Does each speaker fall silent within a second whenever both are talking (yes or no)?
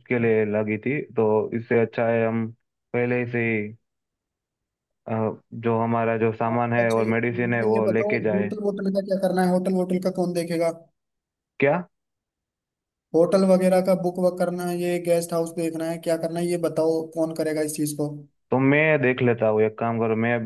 no